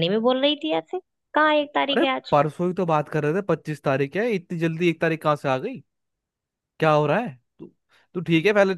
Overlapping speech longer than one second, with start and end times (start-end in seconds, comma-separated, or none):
none